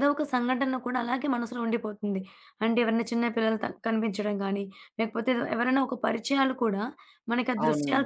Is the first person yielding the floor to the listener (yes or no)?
no